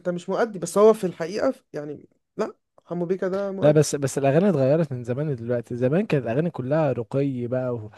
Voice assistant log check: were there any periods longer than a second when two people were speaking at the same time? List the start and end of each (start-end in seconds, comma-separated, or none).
none